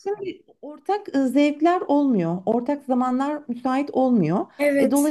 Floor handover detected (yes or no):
no